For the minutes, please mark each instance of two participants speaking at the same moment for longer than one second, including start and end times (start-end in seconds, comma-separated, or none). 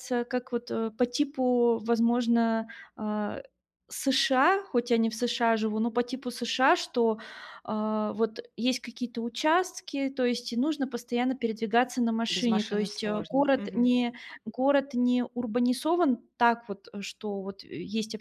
12.3-13.9